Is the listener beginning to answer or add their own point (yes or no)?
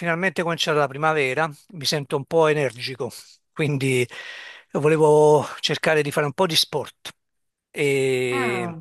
no